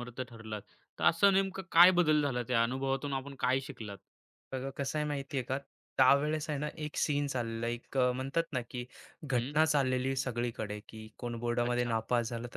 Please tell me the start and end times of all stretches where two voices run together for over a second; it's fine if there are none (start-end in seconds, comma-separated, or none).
none